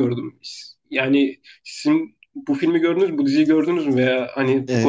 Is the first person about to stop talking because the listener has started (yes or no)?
yes